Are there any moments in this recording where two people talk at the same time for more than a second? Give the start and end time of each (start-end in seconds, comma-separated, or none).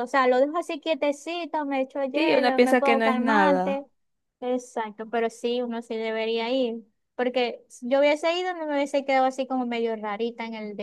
2.1-3.8